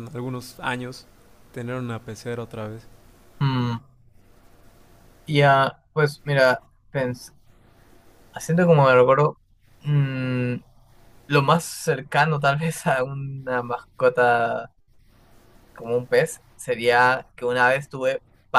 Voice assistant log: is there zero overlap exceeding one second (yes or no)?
yes